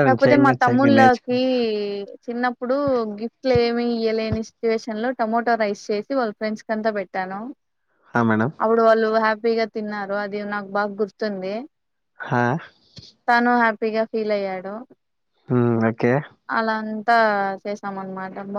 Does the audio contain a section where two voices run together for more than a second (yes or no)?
no